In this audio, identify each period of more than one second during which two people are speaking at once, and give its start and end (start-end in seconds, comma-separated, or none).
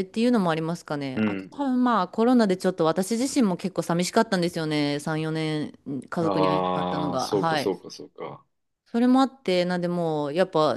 6.2-7.7